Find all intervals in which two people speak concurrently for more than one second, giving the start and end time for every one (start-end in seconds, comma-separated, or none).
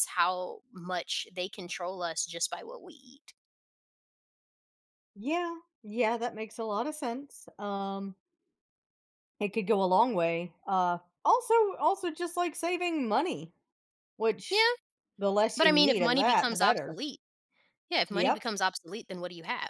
15.6-17.0